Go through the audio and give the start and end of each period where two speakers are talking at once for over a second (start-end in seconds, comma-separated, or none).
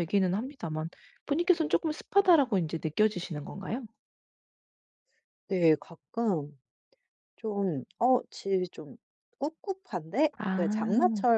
none